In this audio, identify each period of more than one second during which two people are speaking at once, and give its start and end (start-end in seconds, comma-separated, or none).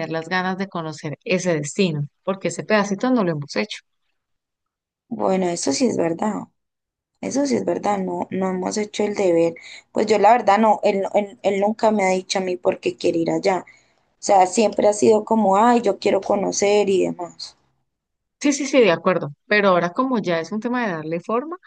none